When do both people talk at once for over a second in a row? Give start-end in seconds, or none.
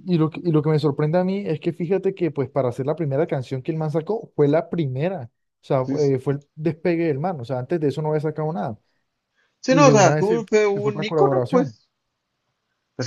9.7-11.8